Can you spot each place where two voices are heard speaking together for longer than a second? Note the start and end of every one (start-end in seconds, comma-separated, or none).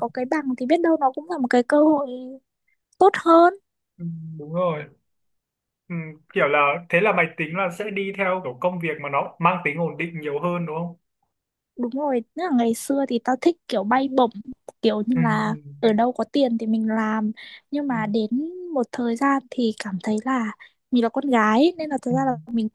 none